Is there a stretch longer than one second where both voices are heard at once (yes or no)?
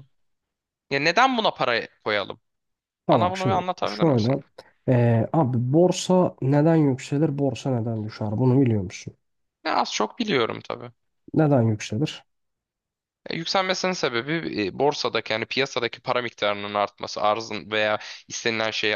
yes